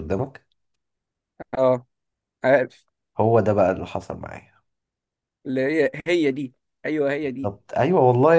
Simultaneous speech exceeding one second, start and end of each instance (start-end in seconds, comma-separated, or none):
none